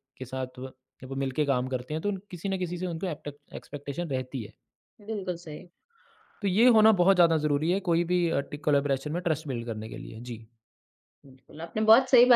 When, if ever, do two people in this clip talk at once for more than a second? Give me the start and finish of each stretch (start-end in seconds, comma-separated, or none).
none